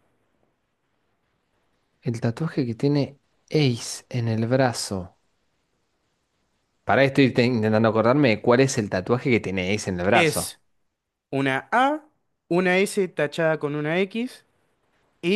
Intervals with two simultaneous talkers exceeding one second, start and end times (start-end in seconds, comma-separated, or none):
none